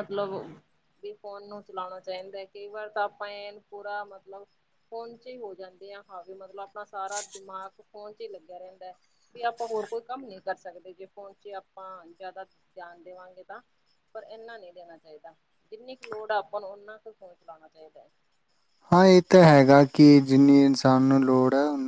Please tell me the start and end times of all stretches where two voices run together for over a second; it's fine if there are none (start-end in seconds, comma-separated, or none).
none